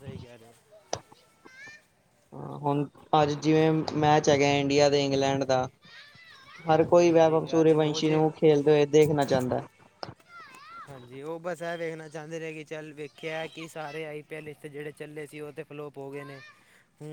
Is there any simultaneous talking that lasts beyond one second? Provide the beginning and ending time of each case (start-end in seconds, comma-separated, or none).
6.8-8.2